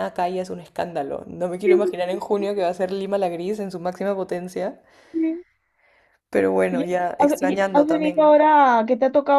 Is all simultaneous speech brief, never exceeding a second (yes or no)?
no